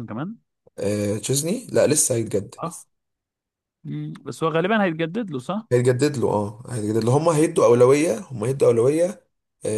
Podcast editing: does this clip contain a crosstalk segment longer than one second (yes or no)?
no